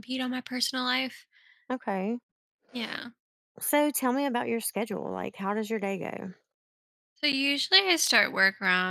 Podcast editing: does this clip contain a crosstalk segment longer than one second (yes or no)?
no